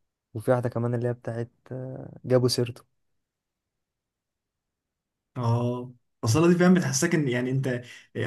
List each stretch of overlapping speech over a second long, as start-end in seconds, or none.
none